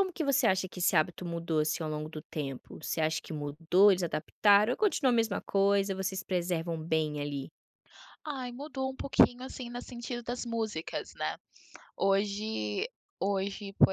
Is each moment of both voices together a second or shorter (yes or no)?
yes